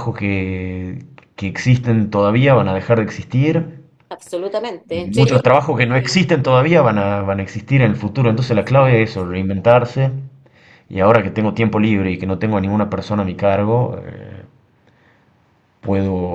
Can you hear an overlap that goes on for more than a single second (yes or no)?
yes